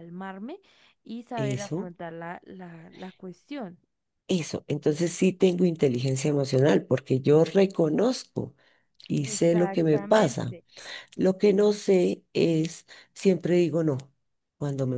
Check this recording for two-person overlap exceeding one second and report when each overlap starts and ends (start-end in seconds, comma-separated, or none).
9.2-10.6